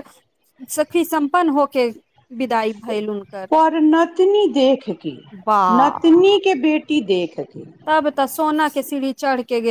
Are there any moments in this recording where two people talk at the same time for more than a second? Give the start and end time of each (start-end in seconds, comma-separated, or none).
none